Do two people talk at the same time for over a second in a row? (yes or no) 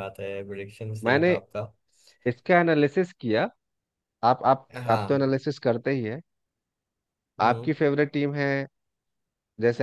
no